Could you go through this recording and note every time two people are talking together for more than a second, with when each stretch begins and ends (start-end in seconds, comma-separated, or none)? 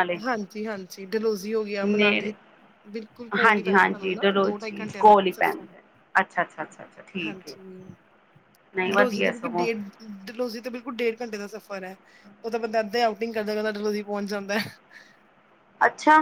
3.4-5.6